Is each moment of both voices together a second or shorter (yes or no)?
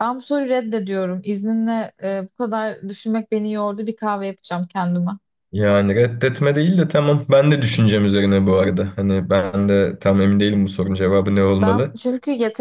yes